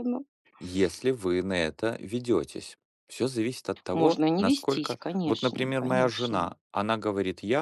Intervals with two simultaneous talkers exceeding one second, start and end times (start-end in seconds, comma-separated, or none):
3.9-6.5